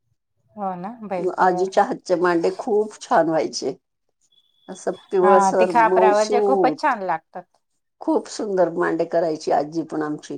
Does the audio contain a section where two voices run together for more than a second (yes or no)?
yes